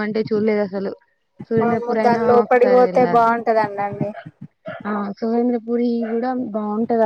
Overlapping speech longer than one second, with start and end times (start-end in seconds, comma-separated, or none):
1.6-3.3